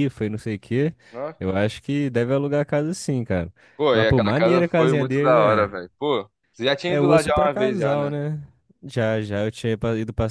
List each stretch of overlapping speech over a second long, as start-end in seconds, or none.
3.9-5.7, 6.9-8.1